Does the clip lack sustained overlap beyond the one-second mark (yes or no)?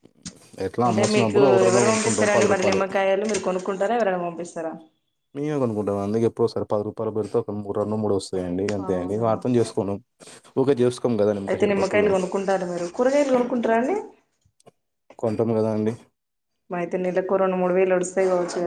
no